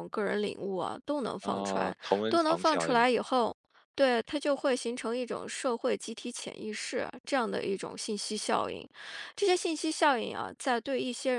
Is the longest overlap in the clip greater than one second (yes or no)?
yes